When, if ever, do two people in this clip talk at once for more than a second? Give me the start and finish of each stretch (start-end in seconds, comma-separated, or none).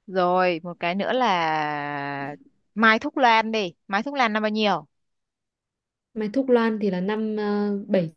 none